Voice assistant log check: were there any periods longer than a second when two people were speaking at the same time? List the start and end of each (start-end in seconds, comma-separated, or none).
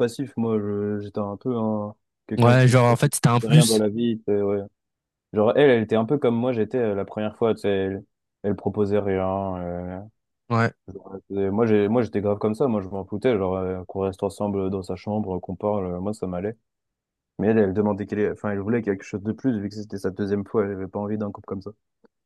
2.4-3.8